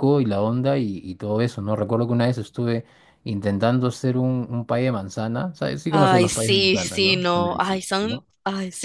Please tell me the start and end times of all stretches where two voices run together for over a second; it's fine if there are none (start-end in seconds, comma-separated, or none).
5.9-8.3